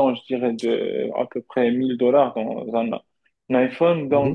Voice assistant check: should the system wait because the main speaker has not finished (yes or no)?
yes